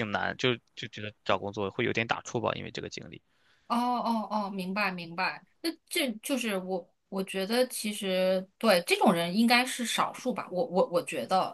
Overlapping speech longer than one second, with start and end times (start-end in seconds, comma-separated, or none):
none